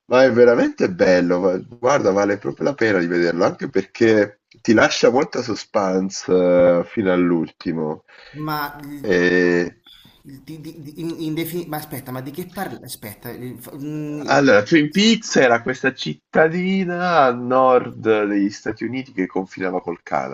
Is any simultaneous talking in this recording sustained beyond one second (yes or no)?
no